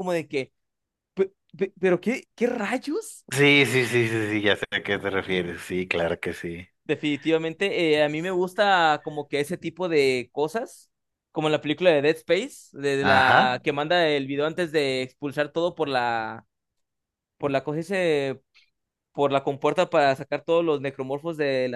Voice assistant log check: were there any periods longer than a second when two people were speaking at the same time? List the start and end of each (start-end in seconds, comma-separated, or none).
none